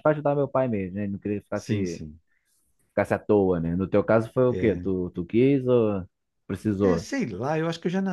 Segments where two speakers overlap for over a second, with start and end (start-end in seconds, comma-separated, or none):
none